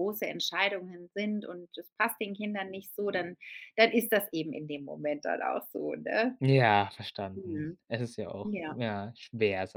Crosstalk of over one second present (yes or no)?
no